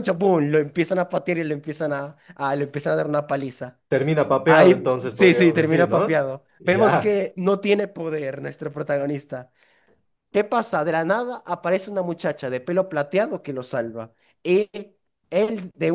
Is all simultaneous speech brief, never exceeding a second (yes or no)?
no